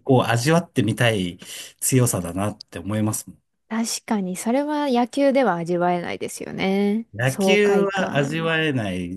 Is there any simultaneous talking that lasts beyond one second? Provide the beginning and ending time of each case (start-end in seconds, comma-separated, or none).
7.1-8.5